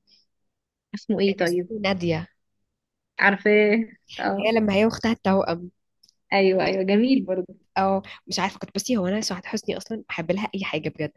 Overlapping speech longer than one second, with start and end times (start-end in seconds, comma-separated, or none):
none